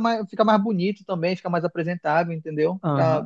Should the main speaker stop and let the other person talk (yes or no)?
yes